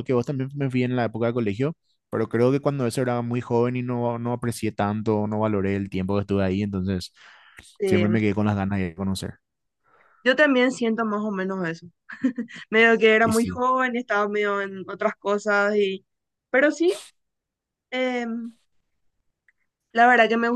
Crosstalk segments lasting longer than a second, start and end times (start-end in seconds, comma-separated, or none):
none